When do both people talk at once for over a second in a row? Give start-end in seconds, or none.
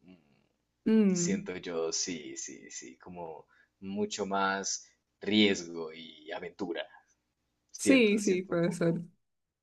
7.8-9.0